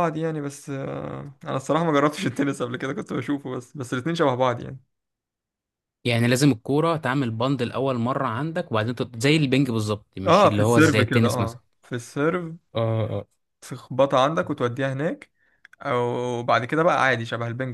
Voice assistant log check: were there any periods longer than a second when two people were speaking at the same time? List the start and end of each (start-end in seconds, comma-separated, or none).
10.3-11.6